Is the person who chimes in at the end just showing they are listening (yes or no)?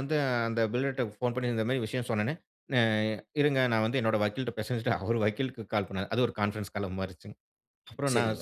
yes